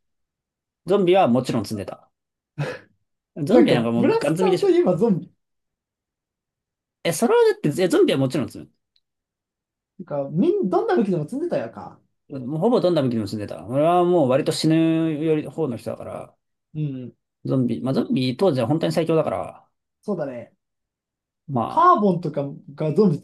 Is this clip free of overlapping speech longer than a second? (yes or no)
no